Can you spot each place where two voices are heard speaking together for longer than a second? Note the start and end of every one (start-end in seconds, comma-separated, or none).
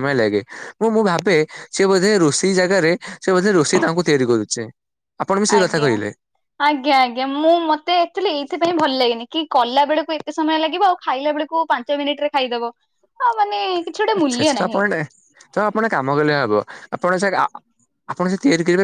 none